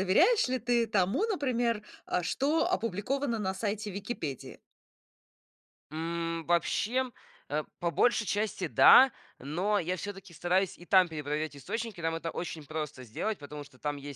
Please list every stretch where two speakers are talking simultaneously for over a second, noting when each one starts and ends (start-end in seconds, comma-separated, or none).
none